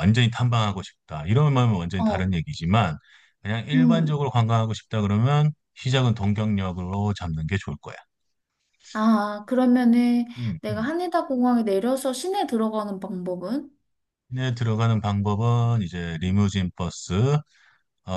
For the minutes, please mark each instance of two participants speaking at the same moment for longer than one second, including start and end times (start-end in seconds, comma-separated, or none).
none